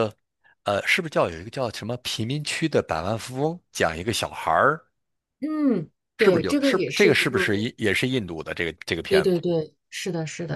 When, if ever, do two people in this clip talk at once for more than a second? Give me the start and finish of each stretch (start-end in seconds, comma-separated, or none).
6.2-7.7